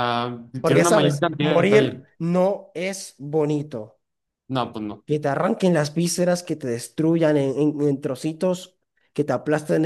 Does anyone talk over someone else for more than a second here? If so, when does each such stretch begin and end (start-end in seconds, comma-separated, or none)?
0.6-2.0